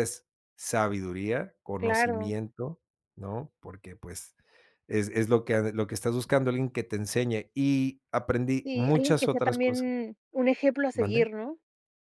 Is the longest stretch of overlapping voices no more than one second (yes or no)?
no